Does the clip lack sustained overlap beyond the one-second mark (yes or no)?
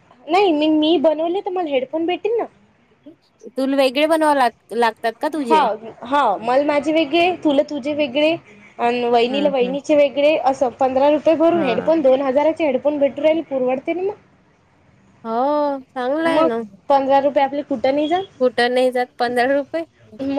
yes